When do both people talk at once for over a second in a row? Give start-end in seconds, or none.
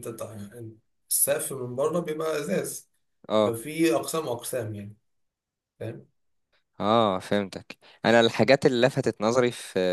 none